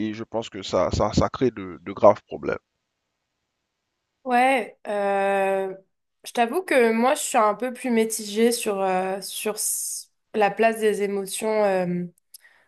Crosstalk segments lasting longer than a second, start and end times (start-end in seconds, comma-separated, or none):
none